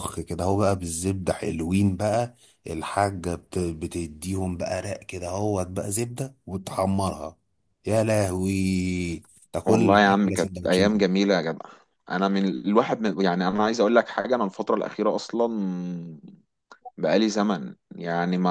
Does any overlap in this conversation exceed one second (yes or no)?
yes